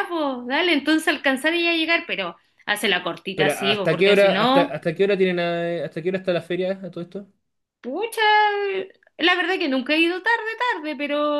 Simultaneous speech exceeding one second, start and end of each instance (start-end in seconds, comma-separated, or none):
3.3-4.7